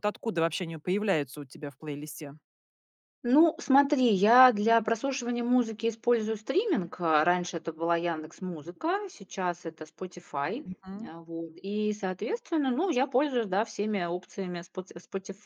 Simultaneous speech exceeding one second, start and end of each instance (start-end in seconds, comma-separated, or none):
none